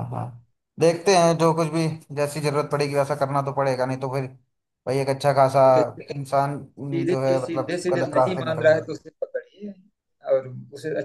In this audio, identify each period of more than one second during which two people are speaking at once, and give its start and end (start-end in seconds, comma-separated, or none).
6.9-9.0